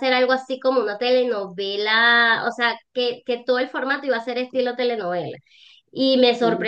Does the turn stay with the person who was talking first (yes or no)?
yes